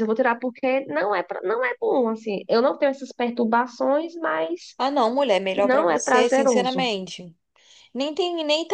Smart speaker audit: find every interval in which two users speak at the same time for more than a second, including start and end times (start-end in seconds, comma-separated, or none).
5.5-6.9